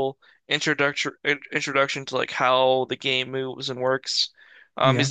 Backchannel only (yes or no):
yes